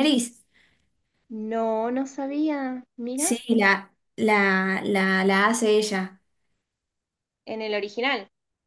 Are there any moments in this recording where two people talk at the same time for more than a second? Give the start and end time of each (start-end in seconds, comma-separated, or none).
none